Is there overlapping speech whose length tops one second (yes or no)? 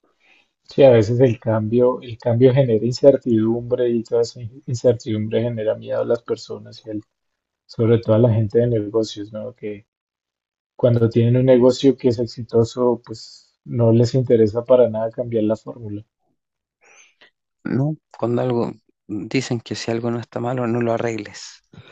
no